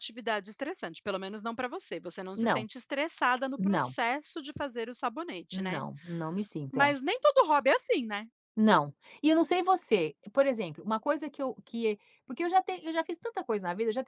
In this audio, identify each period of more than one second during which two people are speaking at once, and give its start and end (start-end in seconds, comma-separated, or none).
none